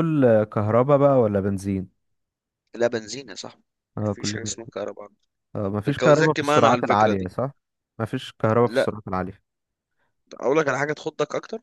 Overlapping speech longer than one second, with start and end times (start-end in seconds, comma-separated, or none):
5.9-7.3